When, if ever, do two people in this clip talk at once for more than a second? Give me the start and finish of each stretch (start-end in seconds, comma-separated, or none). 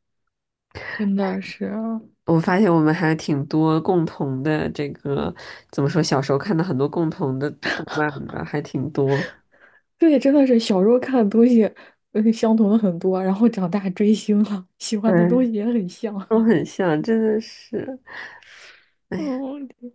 none